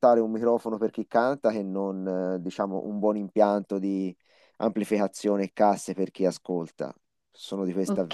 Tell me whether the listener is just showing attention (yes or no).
no